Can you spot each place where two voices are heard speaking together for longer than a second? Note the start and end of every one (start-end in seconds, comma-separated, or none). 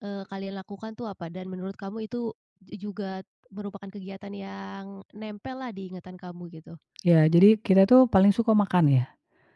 none